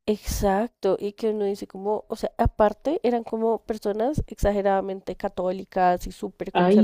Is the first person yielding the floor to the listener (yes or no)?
no